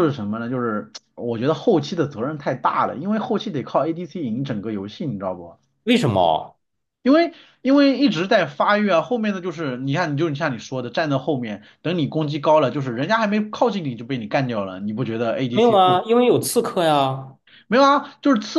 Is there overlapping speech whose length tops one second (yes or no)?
no